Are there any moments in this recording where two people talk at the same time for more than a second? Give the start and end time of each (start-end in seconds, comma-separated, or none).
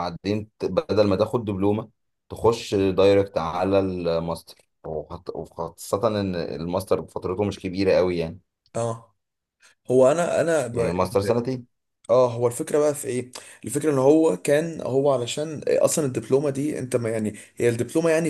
none